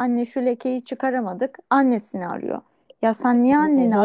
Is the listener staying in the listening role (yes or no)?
yes